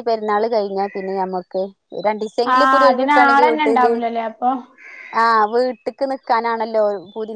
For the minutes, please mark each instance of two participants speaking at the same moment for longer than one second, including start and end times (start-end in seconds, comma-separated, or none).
none